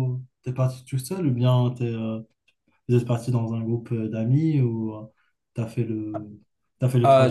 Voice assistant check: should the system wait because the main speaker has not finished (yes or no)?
no